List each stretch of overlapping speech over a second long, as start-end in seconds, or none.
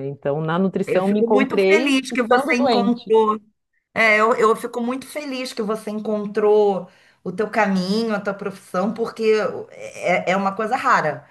0.9-3.2